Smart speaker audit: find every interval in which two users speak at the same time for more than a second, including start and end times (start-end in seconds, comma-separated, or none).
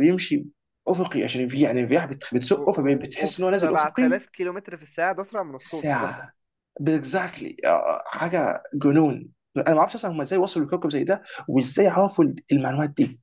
2.5-4.2